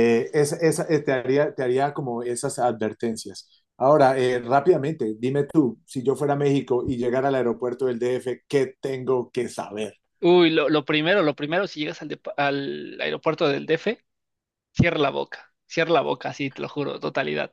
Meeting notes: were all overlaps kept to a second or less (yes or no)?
yes